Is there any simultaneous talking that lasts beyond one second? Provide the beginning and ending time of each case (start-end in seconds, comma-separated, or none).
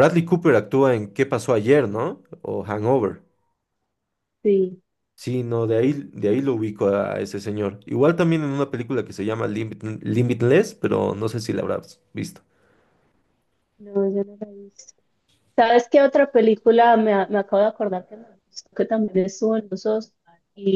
none